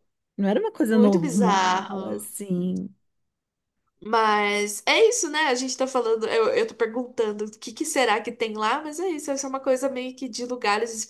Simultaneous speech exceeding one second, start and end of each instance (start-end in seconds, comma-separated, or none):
0.8-2.3